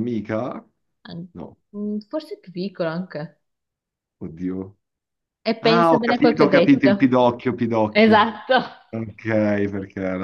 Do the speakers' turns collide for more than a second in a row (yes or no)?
yes